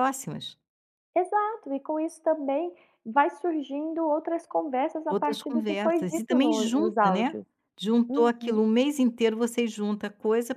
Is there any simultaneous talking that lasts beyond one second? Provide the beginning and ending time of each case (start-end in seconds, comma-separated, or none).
5.1-7.4